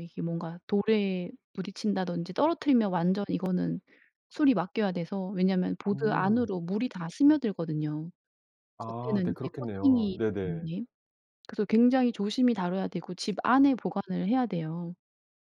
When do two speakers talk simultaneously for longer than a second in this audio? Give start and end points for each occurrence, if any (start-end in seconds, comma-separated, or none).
8.8-10.7